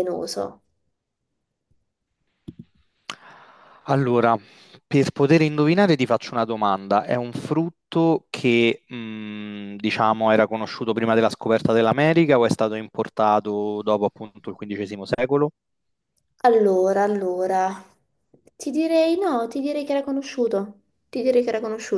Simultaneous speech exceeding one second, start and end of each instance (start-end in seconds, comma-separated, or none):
none